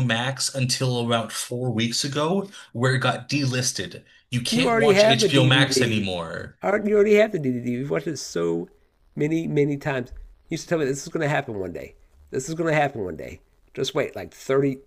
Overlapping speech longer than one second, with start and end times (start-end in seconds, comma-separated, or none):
4.5-6.1